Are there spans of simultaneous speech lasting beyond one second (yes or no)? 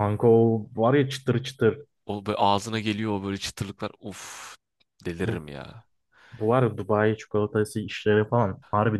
no